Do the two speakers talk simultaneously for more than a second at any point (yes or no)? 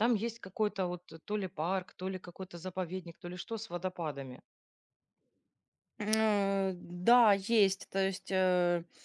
no